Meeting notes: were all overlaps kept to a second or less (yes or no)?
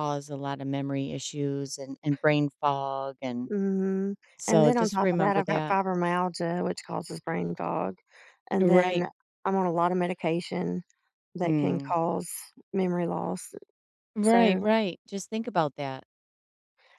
no